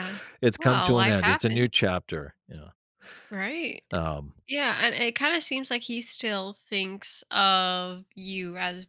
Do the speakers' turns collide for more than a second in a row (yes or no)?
yes